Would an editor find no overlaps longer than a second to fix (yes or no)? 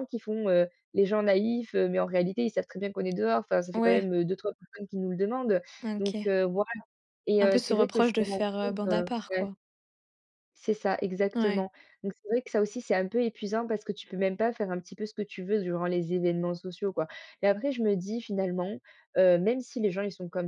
no